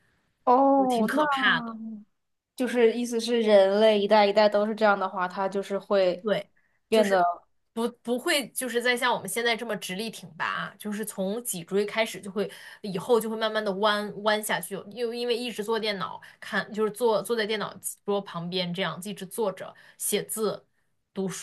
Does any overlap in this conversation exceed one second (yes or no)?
no